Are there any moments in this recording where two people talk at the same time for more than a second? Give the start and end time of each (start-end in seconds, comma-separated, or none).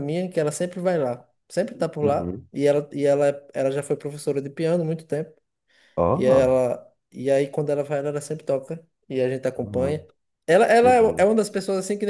none